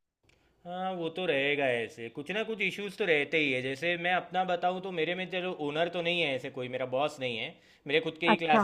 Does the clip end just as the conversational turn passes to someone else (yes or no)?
no